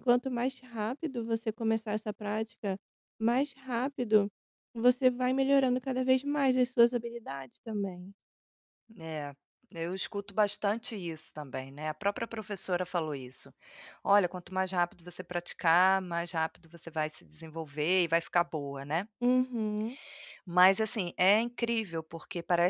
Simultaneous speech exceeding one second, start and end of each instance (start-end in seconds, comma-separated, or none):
none